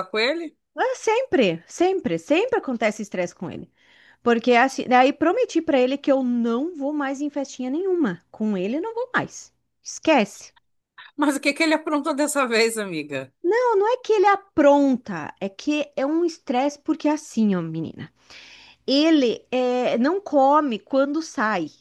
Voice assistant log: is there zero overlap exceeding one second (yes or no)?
yes